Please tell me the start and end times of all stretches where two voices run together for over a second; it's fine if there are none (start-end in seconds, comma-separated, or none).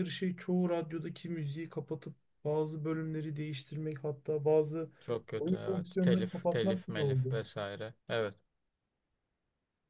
5.4-7.3